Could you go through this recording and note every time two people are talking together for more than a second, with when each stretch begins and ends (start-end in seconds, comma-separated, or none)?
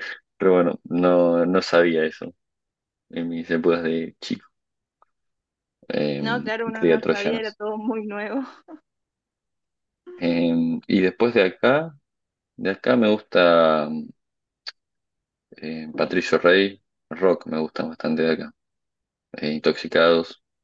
6.2-7.6